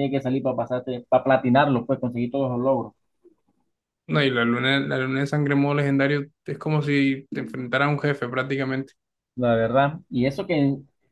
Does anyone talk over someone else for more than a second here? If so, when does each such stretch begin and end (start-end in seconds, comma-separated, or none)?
none